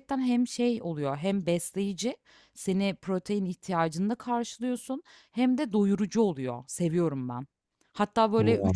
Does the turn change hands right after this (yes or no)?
no